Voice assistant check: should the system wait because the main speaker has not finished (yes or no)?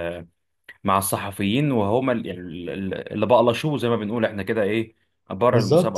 no